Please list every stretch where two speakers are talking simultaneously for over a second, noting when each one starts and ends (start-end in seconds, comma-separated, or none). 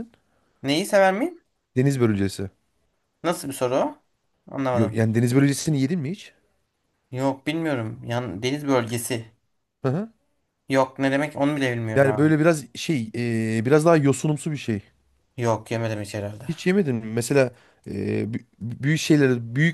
none